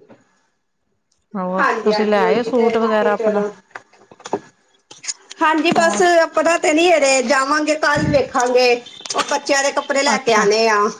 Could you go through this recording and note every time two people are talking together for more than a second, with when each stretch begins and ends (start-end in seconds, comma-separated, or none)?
1.6-3.4